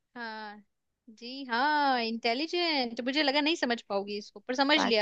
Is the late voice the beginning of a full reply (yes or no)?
yes